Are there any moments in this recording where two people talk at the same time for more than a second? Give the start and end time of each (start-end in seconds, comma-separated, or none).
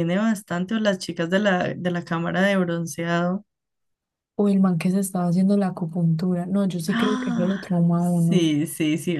6.9-8.4